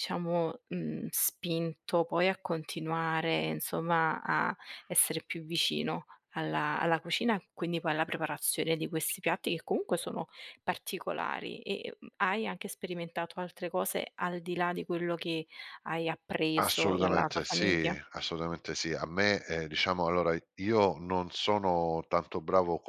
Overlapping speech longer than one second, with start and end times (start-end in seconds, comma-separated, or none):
16.6-18.0